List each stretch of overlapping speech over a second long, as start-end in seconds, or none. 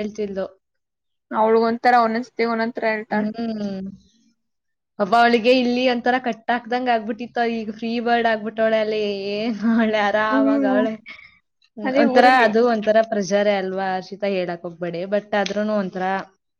none